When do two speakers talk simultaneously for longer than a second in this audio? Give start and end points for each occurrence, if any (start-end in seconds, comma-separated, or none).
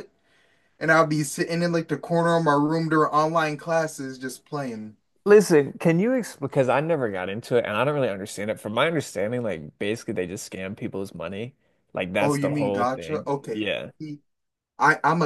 12.2-13.9